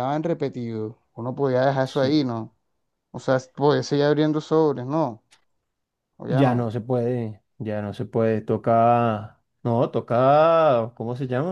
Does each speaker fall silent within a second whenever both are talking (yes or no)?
yes